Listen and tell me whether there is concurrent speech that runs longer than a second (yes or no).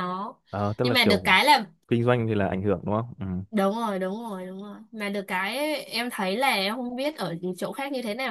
no